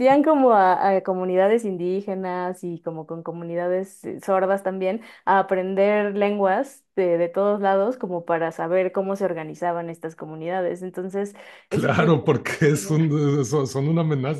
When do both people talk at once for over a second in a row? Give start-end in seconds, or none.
11.7-13.0